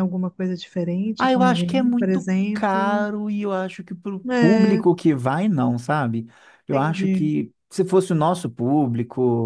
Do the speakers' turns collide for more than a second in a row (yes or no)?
yes